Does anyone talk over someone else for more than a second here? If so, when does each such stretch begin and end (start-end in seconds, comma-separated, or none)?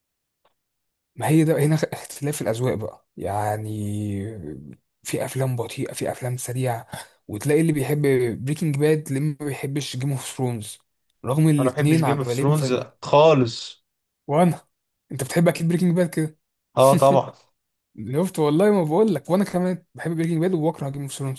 11.6-12.8